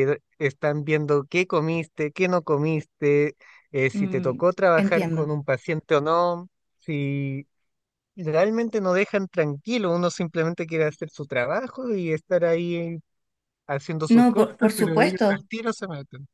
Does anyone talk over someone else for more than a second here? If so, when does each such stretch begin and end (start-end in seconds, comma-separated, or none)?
3.9-5.3, 14.1-15.4